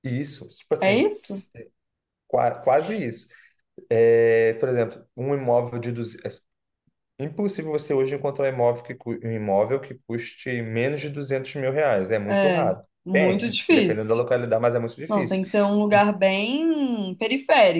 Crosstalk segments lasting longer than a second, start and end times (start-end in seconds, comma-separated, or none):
12.3-14.2